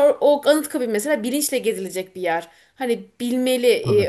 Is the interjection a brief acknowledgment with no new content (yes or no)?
yes